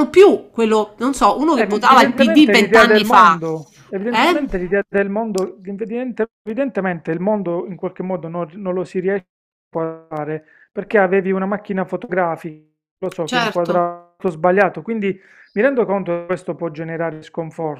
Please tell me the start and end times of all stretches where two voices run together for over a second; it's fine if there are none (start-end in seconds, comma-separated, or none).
1.5-3.4